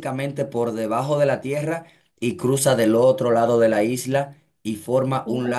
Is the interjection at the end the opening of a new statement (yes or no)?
no